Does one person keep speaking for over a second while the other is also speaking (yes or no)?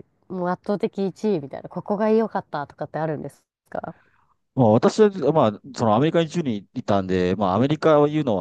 no